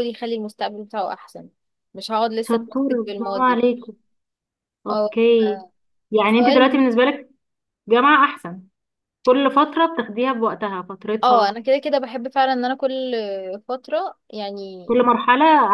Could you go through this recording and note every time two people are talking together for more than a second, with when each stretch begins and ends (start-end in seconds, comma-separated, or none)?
2.4-3.6